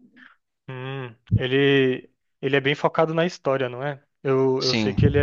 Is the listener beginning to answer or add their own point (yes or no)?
no